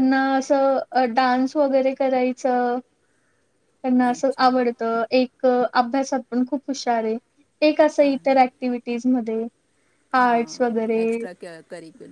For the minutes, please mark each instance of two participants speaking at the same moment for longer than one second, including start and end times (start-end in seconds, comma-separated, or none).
none